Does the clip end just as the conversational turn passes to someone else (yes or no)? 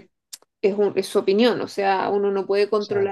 no